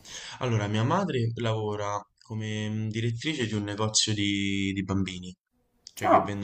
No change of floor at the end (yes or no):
yes